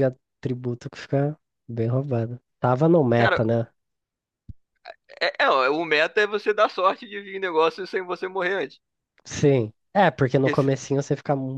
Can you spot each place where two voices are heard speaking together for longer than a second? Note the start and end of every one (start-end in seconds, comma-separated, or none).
none